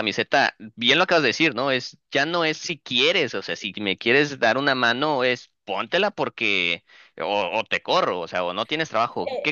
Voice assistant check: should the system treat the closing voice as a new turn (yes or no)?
yes